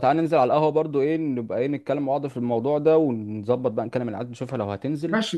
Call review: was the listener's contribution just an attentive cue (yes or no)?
no